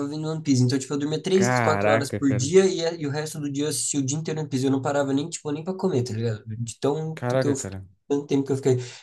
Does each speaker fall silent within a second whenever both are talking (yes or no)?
no